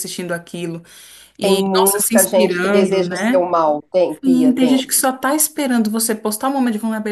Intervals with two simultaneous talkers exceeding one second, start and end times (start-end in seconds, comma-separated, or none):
1.4-3.5